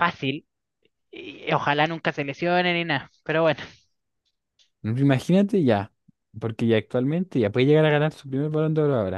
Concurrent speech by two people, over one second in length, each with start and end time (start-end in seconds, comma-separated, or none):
none